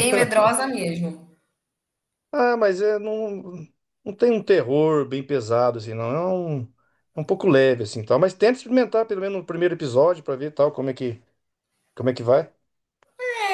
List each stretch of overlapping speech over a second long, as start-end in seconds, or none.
none